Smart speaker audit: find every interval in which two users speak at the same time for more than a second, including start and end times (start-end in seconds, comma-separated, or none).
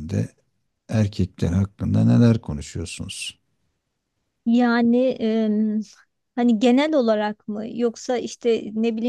none